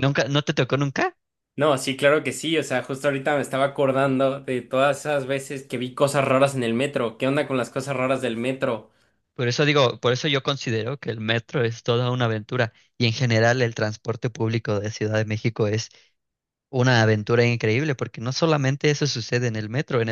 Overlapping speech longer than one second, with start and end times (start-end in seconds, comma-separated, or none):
none